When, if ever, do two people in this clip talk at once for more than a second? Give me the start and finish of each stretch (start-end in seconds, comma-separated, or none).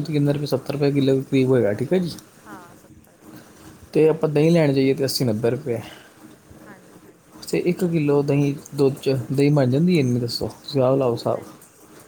none